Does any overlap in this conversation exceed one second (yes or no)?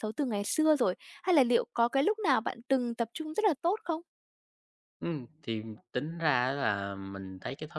no